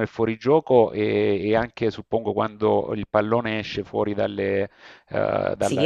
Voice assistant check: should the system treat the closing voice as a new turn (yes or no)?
no